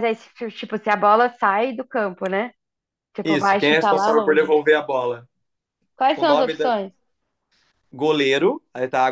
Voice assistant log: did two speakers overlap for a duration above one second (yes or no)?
yes